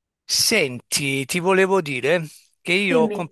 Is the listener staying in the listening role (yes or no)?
yes